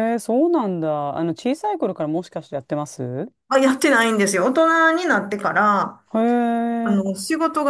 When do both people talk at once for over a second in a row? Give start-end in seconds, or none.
none